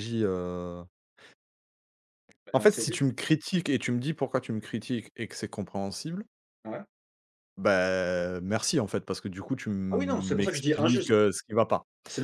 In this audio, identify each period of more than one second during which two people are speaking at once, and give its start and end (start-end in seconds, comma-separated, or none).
9.9-11.1